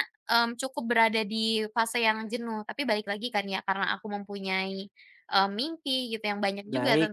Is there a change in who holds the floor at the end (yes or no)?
no